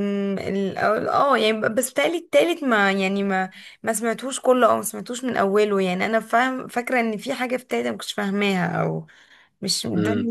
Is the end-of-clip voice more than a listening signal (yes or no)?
yes